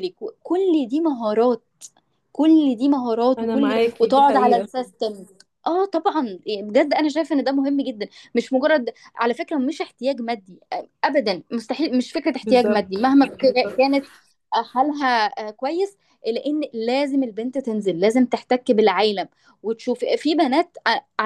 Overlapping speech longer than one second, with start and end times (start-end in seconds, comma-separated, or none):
3.4-4.7, 12.4-13.8